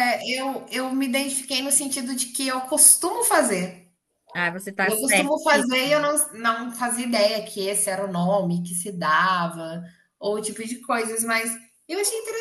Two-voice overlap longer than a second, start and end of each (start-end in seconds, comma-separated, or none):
4.8-6.1